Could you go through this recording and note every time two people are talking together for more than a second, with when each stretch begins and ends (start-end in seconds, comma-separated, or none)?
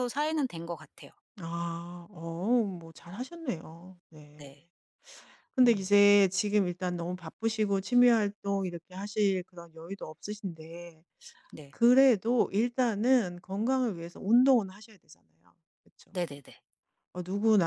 none